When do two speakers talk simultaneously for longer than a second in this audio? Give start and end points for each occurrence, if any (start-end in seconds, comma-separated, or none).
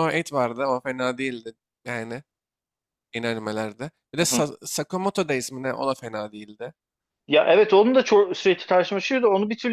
none